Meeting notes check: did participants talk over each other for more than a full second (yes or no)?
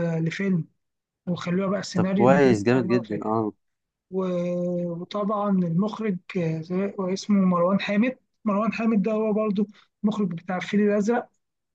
yes